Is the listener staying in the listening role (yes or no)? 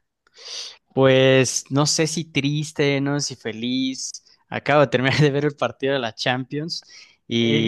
no